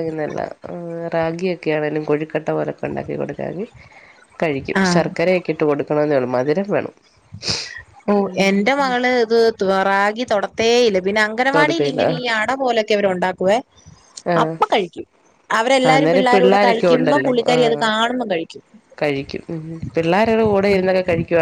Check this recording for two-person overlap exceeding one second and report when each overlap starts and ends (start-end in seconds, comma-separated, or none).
15.9-17.6